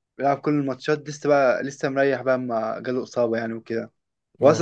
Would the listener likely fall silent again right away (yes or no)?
yes